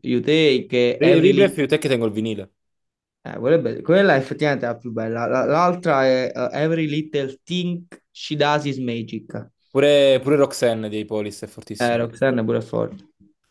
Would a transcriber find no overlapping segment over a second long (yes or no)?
yes